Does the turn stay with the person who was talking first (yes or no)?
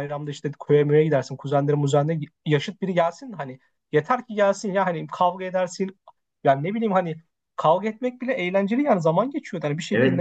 no